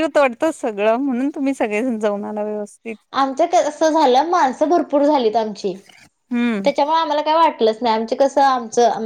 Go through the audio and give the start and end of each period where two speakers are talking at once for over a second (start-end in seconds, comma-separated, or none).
none